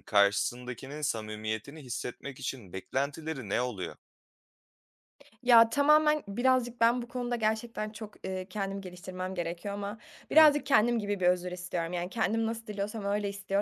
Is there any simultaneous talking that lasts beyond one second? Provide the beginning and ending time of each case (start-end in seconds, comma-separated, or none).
none